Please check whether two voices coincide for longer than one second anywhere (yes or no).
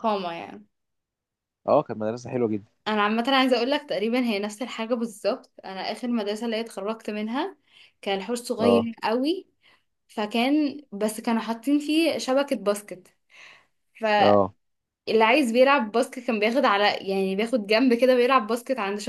no